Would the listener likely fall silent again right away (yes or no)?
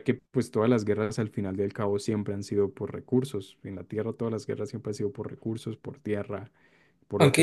no